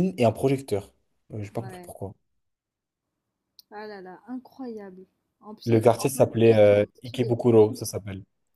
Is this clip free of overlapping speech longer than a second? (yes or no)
no